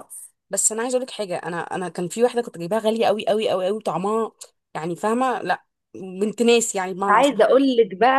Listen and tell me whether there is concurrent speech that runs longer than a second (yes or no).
no